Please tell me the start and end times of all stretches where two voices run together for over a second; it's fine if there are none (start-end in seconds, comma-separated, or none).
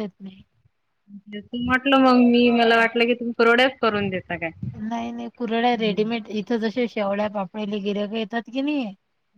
none